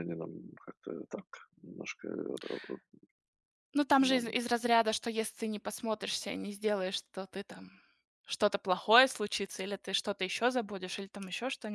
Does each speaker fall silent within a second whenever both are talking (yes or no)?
yes